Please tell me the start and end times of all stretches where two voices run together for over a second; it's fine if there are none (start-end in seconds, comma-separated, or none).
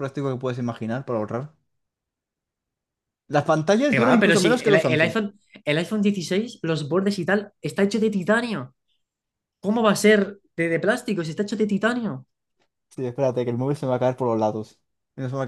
3.9-5.2